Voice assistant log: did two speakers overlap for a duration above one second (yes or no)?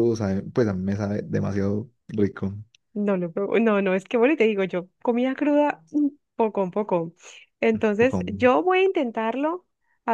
no